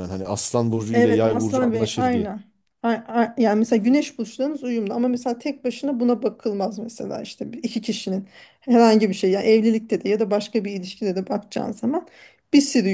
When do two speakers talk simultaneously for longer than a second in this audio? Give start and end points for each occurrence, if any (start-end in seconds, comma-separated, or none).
0.9-2.3